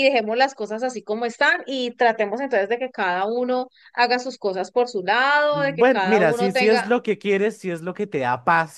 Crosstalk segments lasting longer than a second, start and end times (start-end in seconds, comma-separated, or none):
5.5-6.9